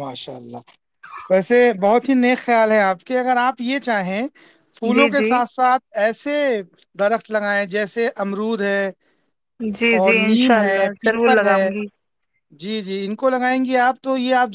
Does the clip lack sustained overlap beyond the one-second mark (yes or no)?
no